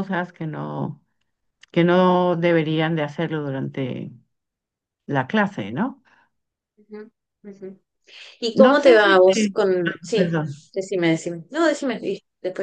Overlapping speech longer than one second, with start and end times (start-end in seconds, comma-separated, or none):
8.6-10.3